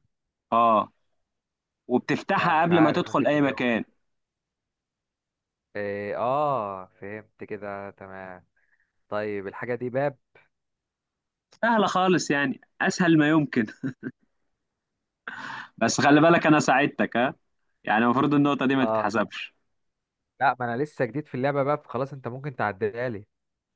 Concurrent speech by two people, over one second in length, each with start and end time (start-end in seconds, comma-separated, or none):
2.4-3.6